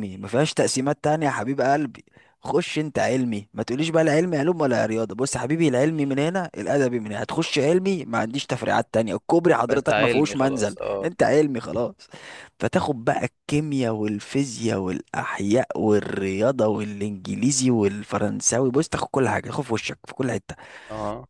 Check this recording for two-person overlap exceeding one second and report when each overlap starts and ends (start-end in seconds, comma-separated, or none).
9.7-11.1